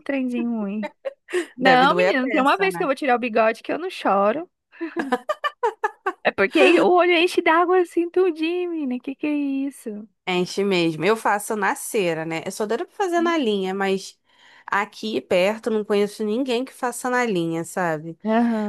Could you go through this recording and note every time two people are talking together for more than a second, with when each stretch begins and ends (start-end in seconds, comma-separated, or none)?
1.6-2.9